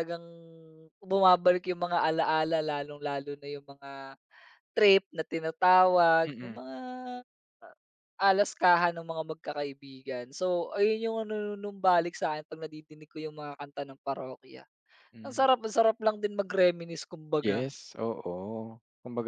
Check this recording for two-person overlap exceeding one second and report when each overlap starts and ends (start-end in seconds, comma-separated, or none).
none